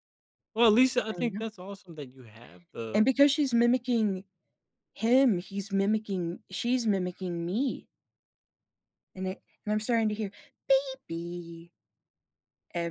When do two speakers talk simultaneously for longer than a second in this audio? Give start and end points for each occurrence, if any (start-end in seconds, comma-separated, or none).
none